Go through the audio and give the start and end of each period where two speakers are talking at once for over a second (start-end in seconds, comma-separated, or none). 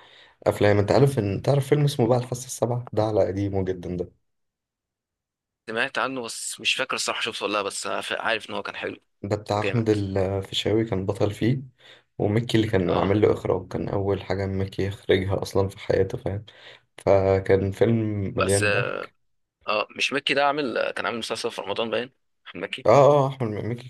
none